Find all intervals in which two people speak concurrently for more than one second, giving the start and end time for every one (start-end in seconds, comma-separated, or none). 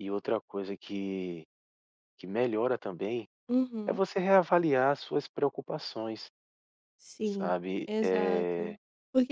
7.2-8.8